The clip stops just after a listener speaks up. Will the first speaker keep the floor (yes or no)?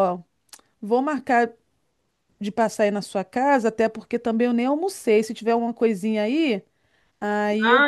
no